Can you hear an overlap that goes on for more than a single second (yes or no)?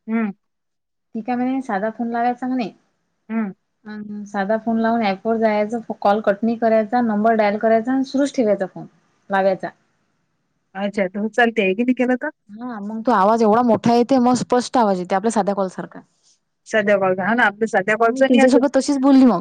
no